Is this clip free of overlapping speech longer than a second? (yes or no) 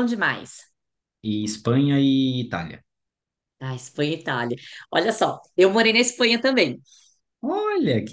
yes